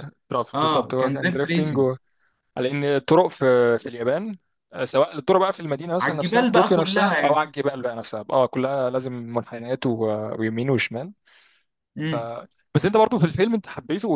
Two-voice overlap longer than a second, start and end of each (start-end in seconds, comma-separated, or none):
0.5-1.9, 6.0-7.4